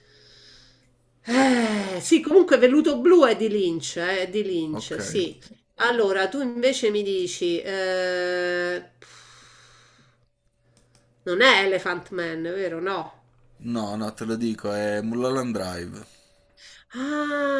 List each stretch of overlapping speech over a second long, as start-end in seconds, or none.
none